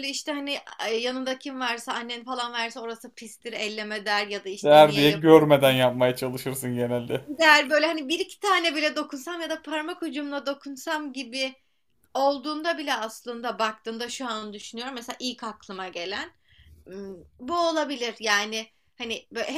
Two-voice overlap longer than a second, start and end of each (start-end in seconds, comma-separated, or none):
4.6-5.8